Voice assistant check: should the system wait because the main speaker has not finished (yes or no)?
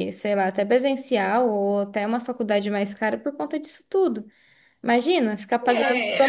no